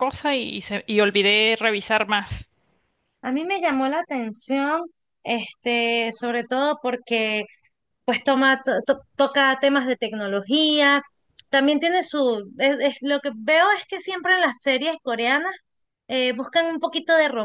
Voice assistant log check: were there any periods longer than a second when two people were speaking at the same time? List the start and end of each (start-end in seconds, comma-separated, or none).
none